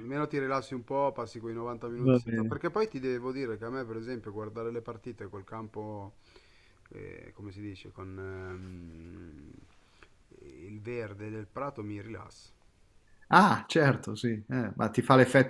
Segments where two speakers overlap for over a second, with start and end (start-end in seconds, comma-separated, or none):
none